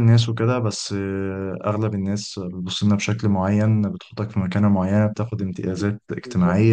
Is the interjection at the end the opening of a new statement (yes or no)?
no